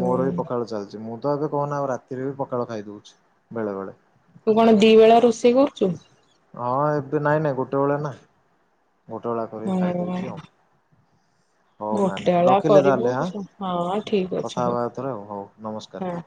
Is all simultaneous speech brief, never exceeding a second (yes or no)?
no